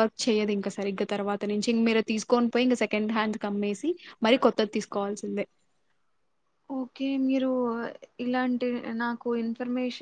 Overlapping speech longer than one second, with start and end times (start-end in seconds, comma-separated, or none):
none